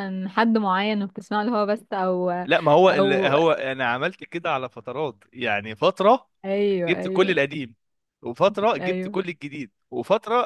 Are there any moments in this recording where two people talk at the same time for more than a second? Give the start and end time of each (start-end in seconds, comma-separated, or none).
none